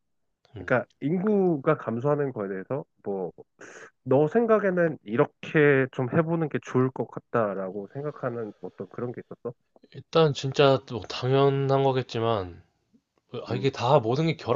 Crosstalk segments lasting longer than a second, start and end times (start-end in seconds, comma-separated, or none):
none